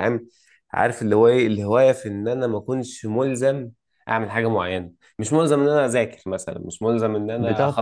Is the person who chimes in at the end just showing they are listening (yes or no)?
yes